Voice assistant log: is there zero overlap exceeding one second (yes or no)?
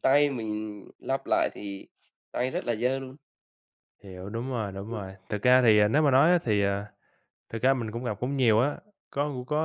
yes